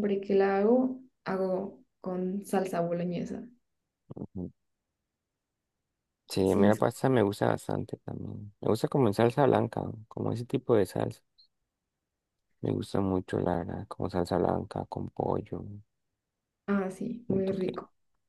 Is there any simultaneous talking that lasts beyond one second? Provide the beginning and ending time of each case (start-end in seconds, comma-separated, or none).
none